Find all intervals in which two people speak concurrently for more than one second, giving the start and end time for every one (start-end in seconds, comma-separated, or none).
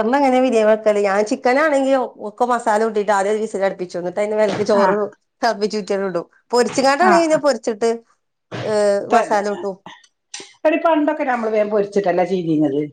none